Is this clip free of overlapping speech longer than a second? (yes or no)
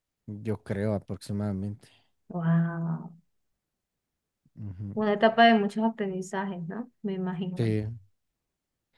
yes